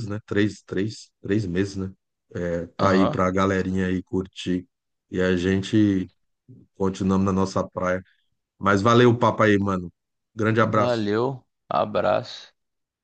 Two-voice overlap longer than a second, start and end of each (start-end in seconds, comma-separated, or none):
none